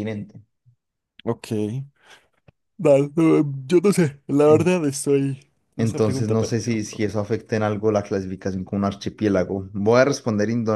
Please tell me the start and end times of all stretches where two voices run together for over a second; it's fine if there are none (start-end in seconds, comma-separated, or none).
5.8-7.0